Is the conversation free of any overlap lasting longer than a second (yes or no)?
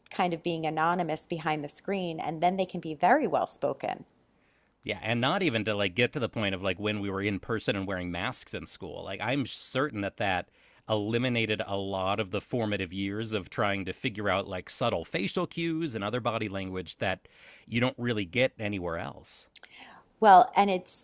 yes